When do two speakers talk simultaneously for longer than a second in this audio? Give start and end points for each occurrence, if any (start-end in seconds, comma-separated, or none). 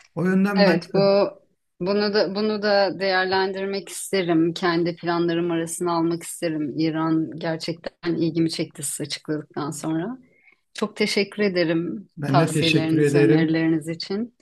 12.2-13.6